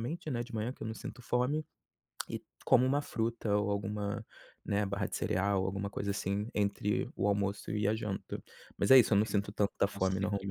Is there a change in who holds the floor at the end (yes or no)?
yes